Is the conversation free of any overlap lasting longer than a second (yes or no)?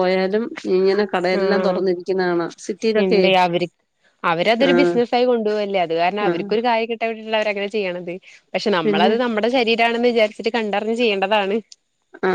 yes